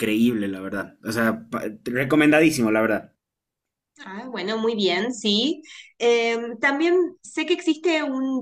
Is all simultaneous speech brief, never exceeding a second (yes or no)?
yes